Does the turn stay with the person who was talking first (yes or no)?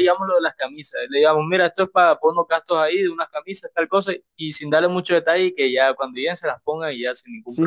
no